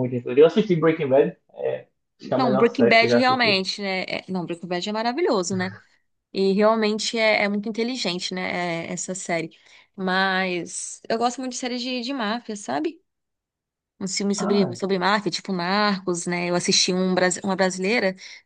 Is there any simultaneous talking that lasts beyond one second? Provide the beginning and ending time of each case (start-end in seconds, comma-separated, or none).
2.4-3.6